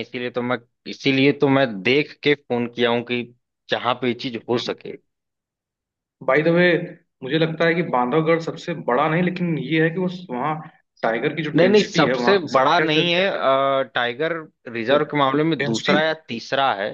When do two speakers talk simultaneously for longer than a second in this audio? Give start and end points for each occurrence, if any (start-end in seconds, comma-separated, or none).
11.5-13.0